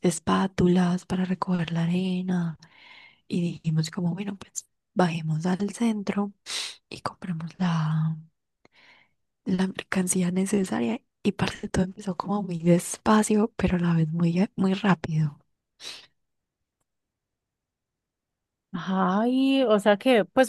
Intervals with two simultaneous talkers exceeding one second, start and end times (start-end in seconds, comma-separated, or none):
none